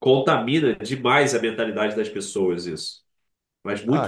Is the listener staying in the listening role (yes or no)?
no